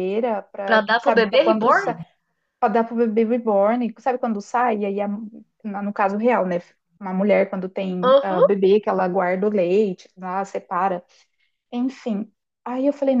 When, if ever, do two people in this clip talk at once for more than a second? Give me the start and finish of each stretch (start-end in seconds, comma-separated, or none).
0.6-2.0